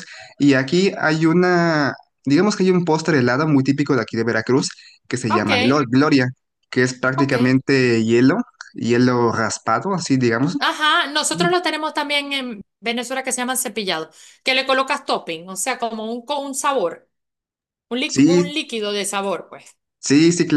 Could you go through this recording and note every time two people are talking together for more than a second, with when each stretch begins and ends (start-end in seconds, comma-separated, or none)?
none